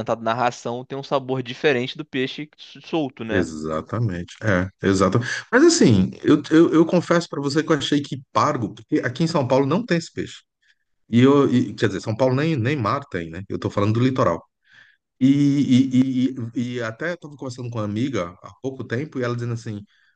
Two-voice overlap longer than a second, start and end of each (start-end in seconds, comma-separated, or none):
none